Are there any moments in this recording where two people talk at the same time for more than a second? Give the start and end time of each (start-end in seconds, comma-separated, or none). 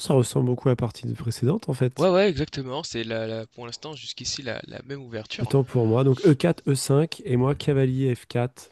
none